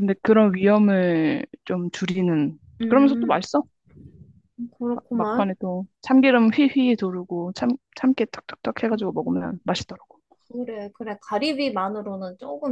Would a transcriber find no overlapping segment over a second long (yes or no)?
yes